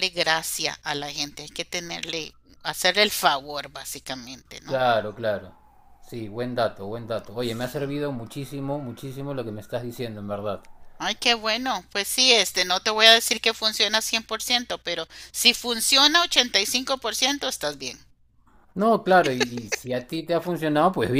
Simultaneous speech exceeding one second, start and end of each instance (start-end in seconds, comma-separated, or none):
none